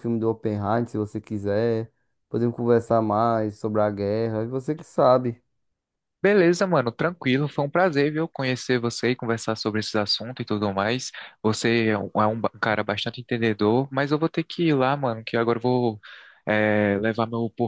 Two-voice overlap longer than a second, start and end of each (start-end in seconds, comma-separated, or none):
none